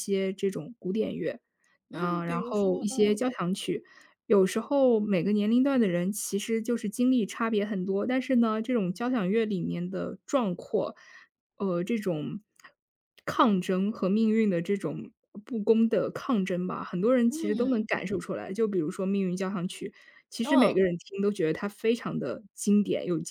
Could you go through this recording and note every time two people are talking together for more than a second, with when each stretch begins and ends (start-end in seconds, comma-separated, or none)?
1.9-3.2